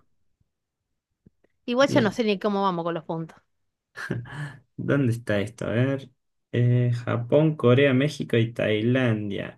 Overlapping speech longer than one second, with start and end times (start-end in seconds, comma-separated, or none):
none